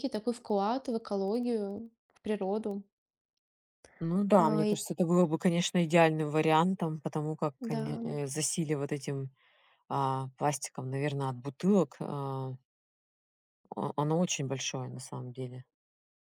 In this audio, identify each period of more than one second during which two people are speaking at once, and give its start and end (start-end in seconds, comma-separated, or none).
none